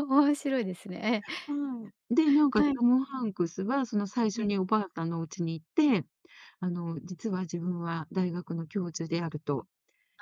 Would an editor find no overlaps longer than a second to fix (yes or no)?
yes